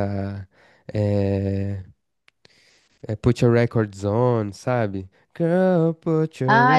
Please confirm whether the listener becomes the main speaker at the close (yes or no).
no